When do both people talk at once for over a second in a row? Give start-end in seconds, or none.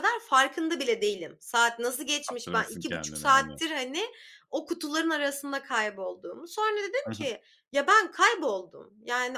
2.3-3.6